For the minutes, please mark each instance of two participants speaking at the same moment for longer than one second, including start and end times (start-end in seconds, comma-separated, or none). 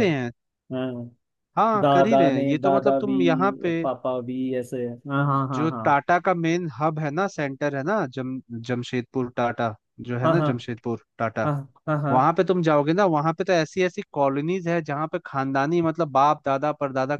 1.8-3.1